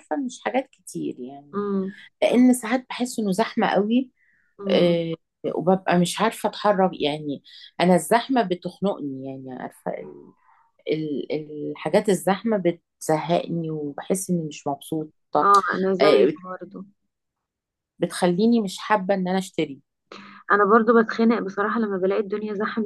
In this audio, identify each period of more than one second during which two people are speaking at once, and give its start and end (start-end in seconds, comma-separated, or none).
none